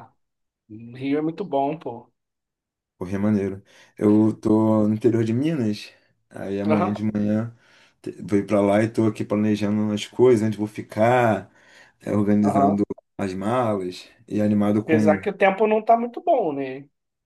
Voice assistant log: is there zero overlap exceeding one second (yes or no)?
yes